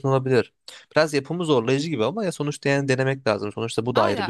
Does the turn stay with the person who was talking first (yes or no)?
no